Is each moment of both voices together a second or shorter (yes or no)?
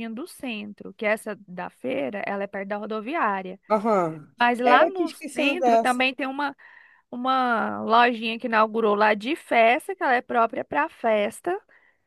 no